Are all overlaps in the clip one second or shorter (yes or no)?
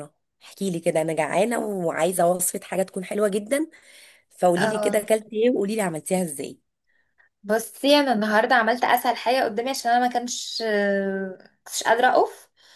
yes